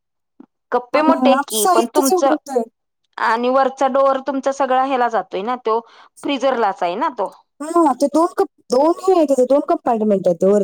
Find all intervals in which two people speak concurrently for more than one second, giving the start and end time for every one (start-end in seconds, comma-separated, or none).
0.9-2.3